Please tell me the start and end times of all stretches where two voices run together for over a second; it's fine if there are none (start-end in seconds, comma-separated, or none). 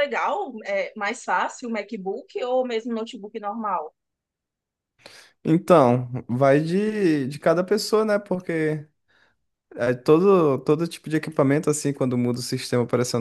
none